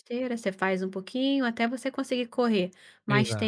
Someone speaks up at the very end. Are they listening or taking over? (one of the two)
listening